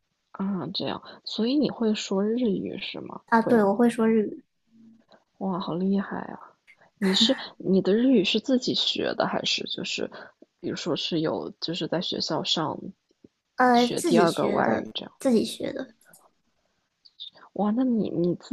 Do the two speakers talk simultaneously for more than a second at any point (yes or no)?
yes